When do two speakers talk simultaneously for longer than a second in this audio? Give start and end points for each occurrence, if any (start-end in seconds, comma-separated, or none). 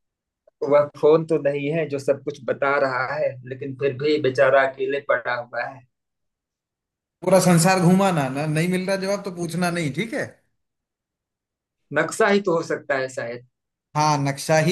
none